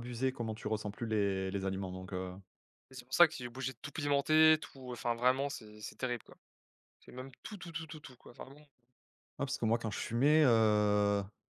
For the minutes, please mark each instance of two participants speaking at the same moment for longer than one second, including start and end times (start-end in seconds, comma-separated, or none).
none